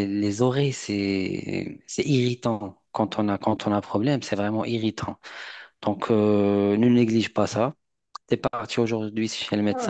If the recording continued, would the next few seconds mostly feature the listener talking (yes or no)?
yes